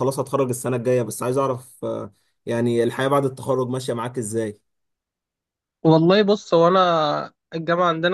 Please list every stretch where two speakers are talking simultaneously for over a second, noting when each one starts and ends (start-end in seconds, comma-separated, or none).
none